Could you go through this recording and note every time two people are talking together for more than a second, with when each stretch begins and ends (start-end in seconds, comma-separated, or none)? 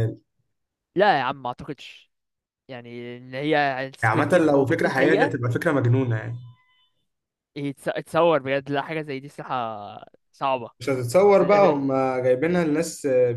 4.0-5.3